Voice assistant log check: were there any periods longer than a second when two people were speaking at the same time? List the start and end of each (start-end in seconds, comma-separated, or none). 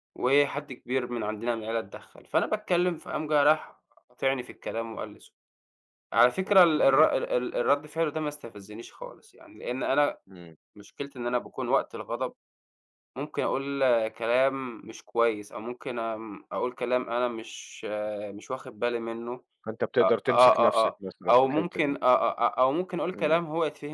20.0-22.0